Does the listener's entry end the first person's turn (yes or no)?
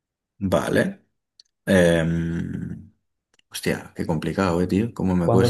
yes